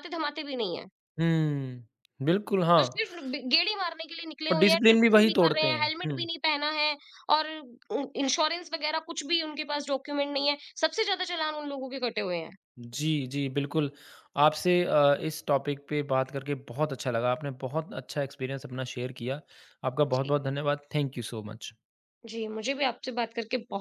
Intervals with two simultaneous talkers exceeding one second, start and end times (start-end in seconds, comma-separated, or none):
4.5-6.2